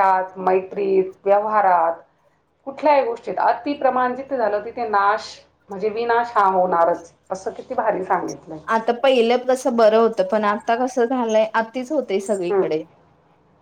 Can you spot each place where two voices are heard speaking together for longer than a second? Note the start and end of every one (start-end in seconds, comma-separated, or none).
none